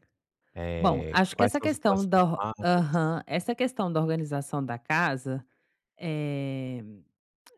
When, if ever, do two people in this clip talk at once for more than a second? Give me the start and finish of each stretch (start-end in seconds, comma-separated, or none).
0.8-3.0